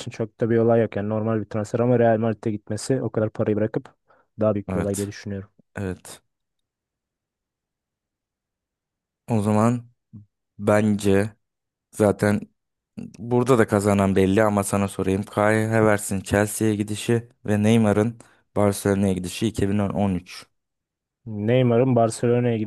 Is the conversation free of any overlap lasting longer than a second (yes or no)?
yes